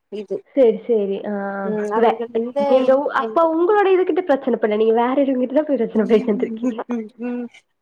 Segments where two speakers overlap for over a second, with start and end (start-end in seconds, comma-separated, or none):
none